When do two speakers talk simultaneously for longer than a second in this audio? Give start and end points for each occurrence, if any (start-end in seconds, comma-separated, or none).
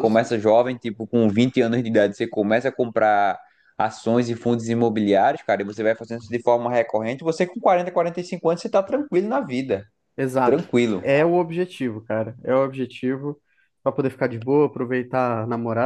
none